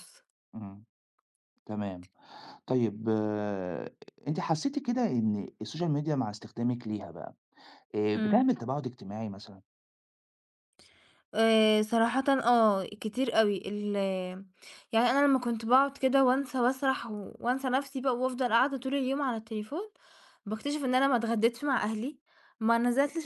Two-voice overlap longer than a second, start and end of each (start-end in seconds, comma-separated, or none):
none